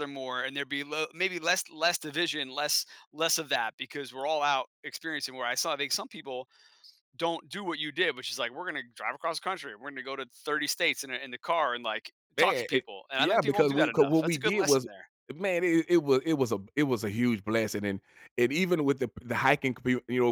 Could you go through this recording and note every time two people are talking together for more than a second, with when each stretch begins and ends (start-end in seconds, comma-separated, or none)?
12.4-14.9